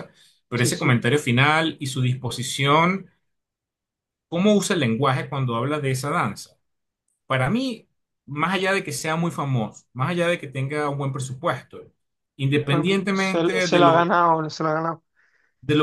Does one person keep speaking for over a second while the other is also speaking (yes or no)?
yes